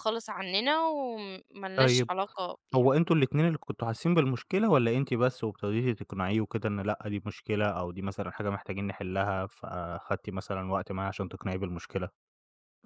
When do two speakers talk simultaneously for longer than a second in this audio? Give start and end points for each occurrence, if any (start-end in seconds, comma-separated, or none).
none